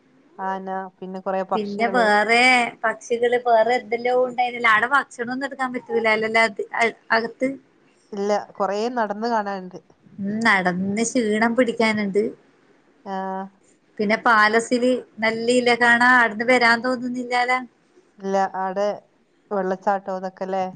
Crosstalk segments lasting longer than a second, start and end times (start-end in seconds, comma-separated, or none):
none